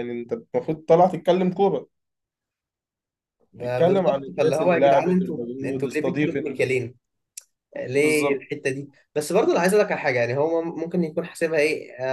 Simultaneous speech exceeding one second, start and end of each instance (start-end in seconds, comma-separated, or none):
3.6-6.6